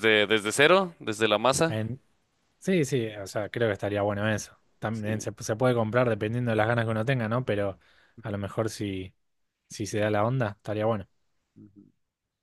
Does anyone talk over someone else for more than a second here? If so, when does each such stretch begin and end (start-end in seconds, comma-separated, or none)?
none